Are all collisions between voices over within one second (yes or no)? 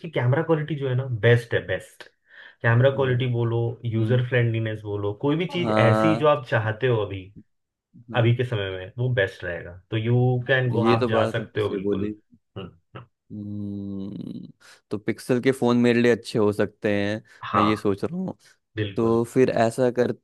no